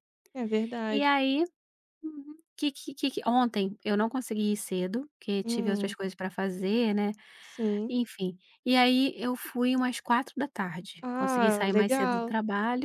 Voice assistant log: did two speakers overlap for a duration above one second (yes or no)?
yes